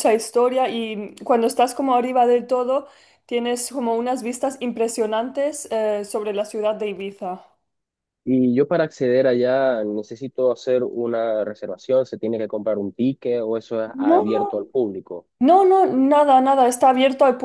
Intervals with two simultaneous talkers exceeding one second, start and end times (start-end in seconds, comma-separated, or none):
none